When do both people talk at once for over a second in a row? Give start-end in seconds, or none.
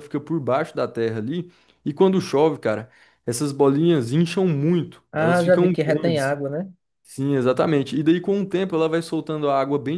5.1-6.4